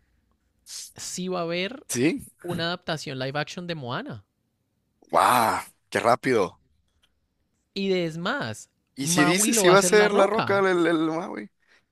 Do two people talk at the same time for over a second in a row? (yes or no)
yes